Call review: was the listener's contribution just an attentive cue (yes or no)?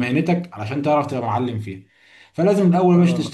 yes